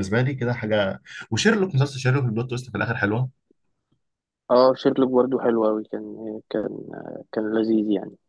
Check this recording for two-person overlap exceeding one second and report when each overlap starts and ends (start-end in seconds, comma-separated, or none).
none